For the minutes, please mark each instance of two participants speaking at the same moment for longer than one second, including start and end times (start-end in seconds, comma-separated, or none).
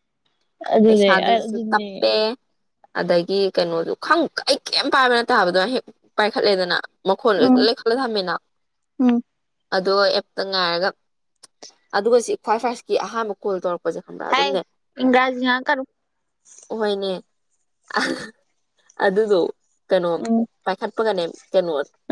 0.9-2.1